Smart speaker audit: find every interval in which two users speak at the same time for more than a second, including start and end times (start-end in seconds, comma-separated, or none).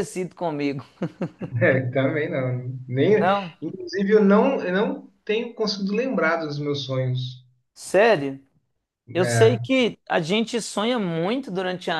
none